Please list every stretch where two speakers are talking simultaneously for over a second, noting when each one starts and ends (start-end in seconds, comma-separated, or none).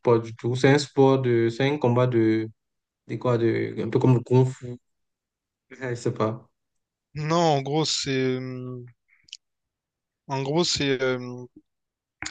none